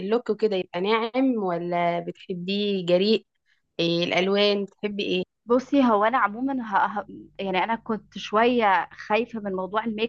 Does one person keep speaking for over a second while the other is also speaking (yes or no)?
no